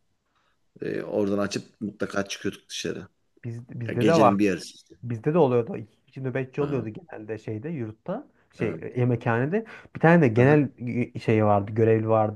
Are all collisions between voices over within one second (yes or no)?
yes